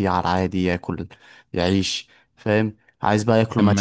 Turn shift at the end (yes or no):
no